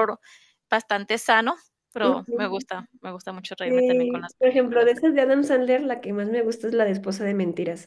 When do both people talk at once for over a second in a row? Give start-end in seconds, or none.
3.6-4.9